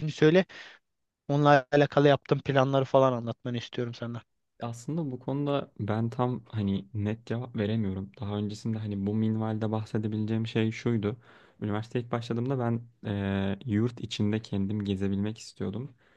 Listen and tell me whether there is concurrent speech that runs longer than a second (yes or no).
no